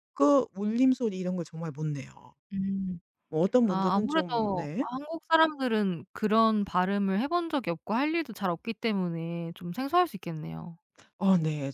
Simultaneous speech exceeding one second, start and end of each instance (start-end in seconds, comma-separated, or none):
3.6-4.9